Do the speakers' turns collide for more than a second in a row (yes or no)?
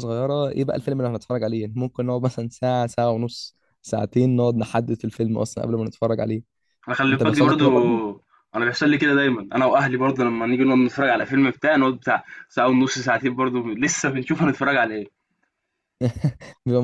no